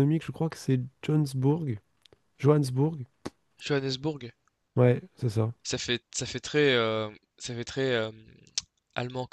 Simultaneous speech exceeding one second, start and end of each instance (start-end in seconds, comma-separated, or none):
none